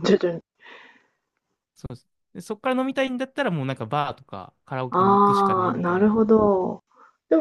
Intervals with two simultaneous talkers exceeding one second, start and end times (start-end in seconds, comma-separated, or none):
4.9-6.2